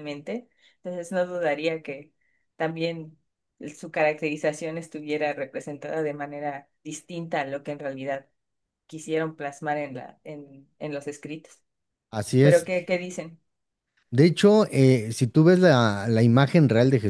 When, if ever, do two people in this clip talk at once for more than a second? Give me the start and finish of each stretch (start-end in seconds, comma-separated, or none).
none